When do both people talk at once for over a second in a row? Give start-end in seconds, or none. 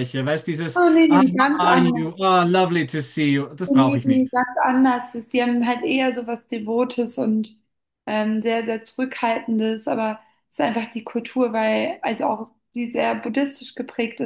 0.7-2.1